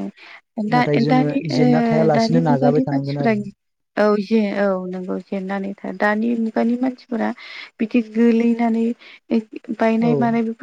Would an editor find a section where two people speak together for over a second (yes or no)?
yes